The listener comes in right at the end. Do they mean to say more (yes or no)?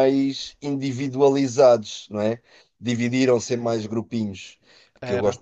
no